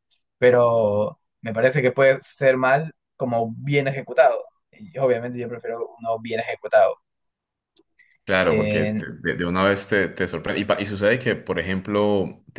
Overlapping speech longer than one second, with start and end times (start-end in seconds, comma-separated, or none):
none